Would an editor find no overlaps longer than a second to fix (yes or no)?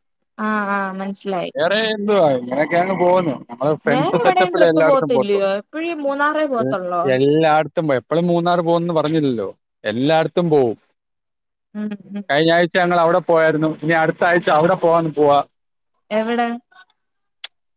no